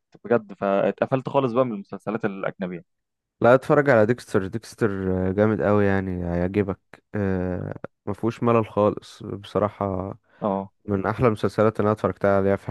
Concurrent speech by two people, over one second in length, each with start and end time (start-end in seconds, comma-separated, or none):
none